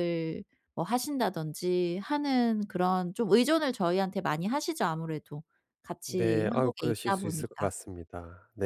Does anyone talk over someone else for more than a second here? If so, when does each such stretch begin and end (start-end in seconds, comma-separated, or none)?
6.1-7.7